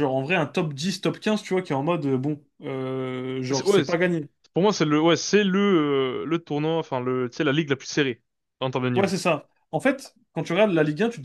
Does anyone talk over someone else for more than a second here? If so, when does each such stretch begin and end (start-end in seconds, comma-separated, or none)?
none